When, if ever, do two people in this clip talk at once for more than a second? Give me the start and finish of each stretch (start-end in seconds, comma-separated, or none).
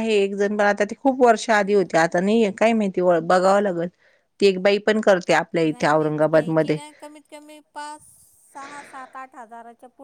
none